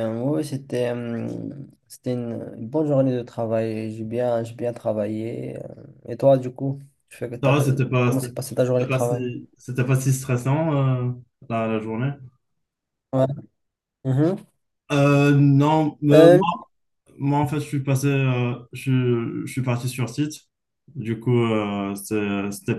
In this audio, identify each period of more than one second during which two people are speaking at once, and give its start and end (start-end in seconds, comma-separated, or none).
7.4-9.2